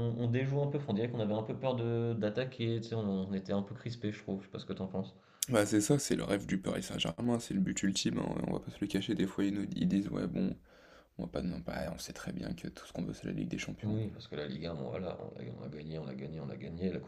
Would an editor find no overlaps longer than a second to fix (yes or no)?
yes